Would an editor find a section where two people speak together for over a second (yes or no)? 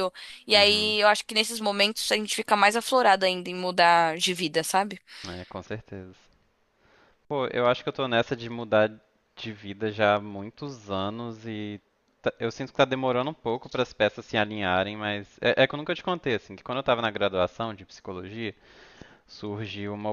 no